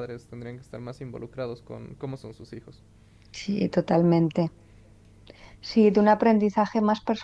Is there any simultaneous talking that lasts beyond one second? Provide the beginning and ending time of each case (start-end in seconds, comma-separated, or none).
none